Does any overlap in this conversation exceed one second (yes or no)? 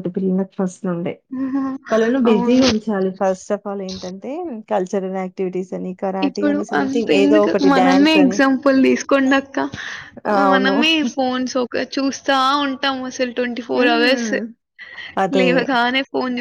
yes